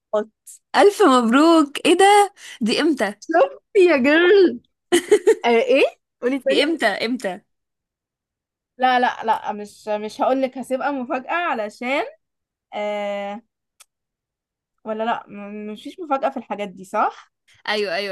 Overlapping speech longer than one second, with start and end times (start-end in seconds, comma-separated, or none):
none